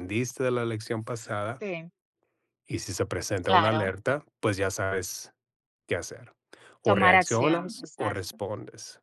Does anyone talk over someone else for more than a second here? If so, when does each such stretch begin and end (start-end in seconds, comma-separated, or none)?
6.8-8.3